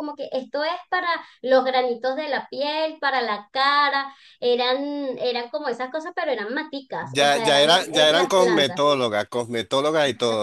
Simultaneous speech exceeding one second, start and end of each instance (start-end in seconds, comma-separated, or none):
7.2-8.8